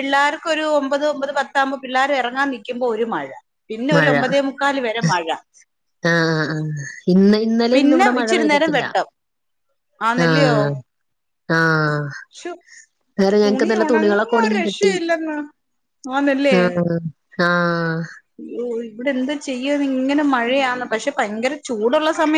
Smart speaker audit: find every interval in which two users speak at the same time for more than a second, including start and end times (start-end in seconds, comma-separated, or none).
13.4-14.9